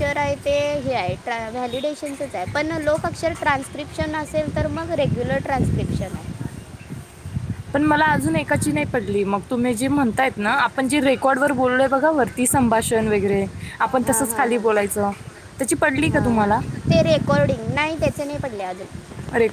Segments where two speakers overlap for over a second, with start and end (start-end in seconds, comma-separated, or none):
none